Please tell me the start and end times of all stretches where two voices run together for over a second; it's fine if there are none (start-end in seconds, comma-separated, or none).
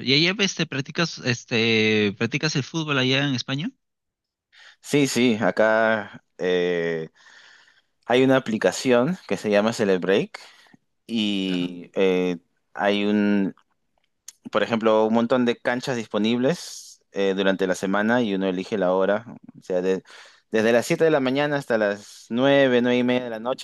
none